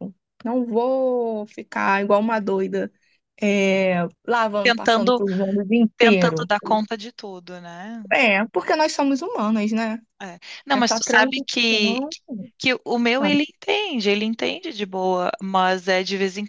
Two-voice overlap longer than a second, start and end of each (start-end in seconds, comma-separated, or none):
10.7-12.0